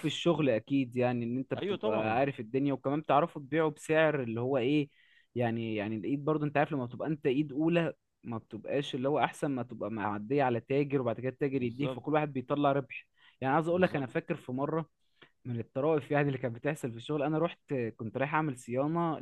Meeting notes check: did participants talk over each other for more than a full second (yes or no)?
no